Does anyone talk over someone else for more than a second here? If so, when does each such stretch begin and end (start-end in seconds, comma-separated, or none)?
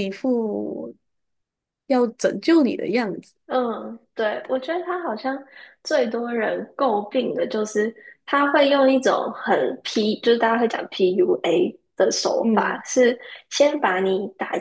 none